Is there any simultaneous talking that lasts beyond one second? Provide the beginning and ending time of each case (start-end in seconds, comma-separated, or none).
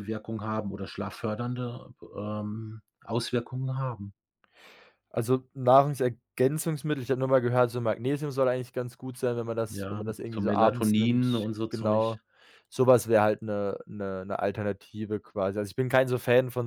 9.7-12.2